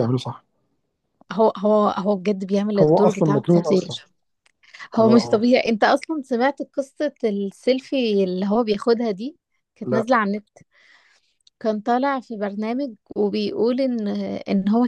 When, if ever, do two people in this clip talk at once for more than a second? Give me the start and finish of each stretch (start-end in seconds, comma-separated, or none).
2.8-4.0